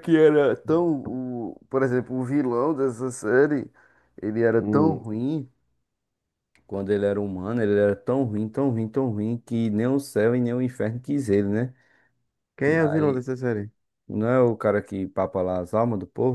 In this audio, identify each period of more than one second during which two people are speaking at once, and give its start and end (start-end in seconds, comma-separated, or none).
none